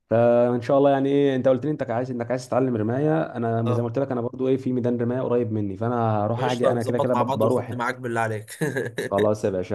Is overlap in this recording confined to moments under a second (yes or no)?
no